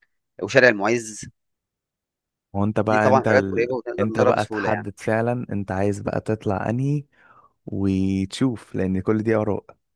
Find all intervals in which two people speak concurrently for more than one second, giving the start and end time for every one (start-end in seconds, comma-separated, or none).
2.9-4.8